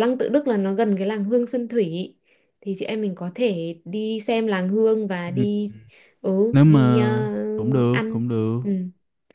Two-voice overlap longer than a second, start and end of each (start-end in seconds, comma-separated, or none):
none